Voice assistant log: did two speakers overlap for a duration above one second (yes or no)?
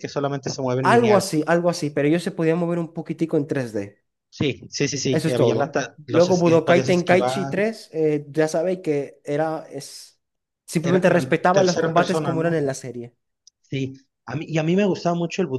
yes